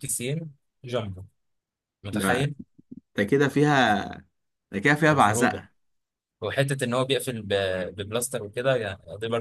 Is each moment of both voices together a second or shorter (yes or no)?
yes